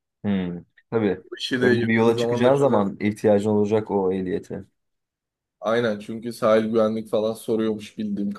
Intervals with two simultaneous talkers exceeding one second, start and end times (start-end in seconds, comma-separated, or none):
1.6-2.9